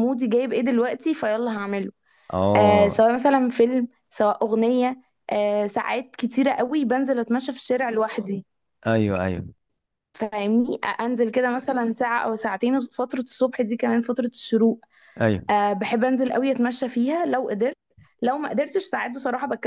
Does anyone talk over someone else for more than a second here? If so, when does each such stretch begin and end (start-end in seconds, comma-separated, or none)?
none